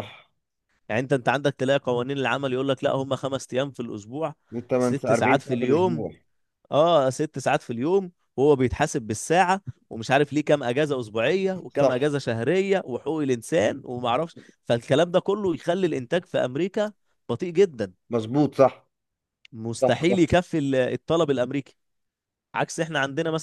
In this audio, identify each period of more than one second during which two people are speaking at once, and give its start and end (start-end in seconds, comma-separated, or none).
4.8-6.1